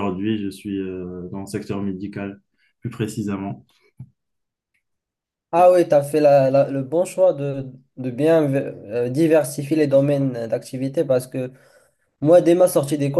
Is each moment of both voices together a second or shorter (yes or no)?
yes